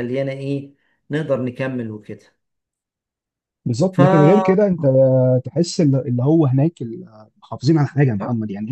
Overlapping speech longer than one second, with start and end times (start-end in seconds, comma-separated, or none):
none